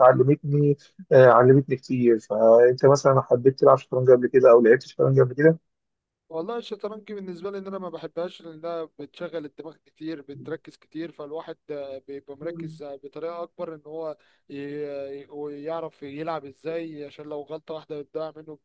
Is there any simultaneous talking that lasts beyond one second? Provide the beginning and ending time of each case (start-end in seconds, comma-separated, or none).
none